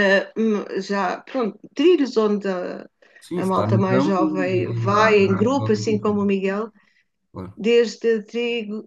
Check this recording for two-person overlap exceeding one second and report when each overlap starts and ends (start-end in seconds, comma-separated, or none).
3.4-6.2